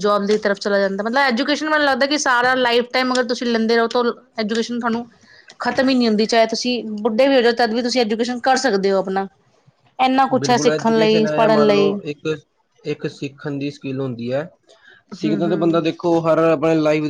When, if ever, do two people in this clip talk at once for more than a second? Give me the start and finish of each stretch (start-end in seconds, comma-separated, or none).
10.4-11.9